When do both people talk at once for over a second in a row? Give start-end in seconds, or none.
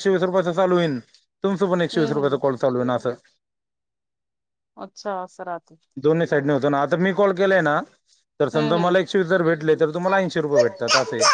none